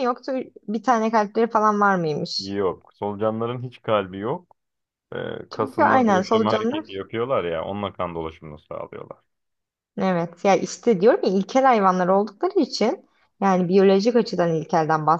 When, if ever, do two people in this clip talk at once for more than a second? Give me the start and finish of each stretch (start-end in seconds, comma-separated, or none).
5.5-6.9